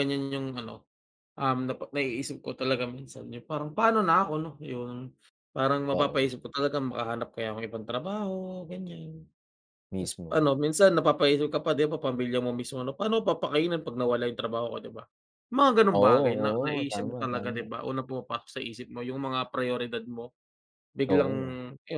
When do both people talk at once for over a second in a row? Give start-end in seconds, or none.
15.9-17.7